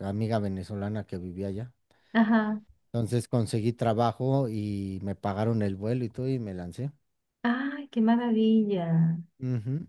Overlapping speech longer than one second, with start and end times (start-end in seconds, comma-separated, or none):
none